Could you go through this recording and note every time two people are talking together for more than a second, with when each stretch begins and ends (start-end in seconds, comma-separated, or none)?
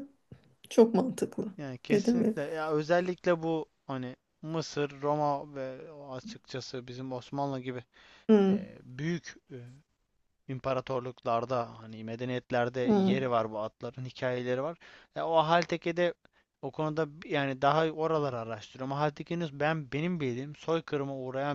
none